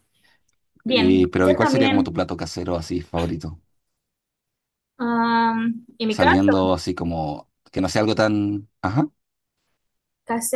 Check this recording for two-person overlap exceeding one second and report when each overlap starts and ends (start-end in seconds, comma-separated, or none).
0.9-2.1